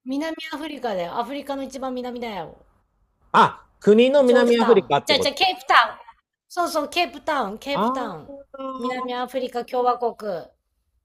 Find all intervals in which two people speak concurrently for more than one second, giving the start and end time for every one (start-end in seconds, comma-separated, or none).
4.2-5.5